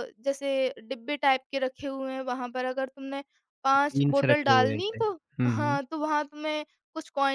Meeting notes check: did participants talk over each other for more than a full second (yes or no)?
yes